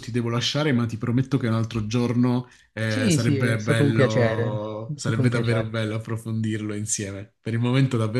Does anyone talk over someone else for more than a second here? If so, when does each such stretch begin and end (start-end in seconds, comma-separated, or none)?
2.8-5.8